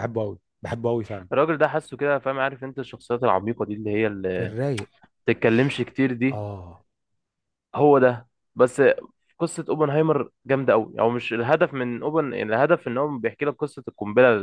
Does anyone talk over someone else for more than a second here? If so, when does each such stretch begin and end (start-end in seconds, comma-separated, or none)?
none